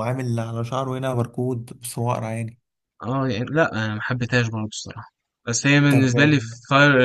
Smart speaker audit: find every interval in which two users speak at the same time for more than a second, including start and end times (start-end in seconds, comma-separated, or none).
none